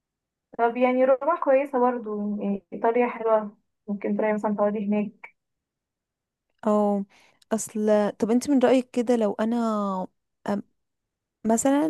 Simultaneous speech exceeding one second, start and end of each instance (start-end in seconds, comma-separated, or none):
none